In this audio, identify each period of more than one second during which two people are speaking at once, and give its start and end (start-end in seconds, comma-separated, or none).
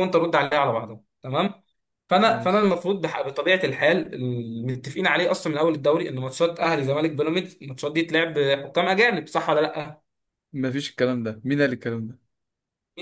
none